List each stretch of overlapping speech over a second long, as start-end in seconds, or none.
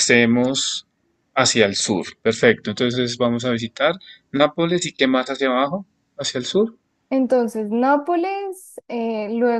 none